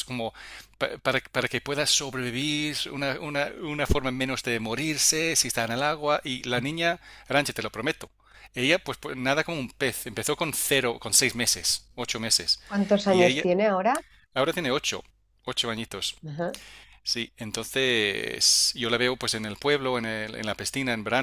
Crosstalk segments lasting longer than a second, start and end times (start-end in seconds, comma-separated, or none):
none